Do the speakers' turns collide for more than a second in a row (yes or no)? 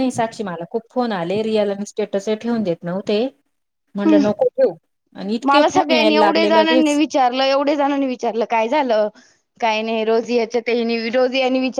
yes